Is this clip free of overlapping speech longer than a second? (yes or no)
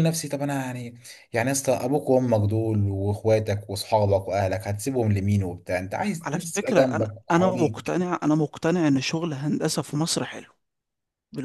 no